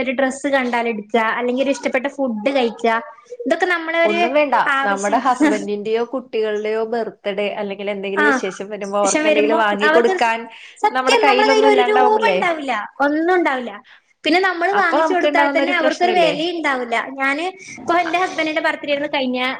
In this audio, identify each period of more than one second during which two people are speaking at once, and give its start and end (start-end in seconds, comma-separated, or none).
11.0-12.4, 14.8-16.3